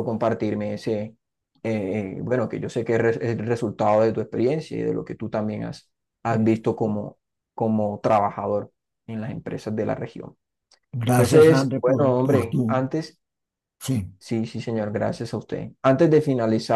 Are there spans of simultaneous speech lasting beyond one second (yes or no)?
yes